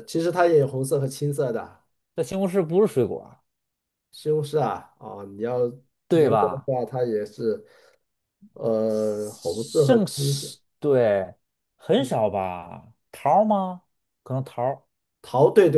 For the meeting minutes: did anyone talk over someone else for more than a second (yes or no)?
yes